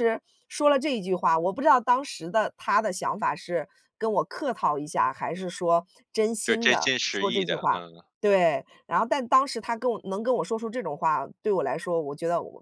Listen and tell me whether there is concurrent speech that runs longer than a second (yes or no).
yes